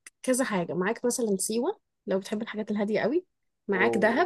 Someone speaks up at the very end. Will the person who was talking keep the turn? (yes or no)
yes